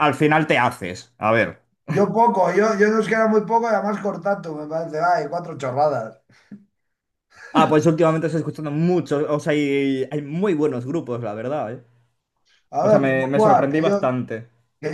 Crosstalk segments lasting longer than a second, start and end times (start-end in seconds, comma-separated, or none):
12.8-14.0